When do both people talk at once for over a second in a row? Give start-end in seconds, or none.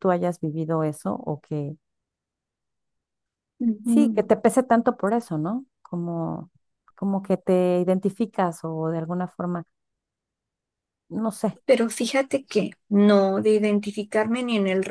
none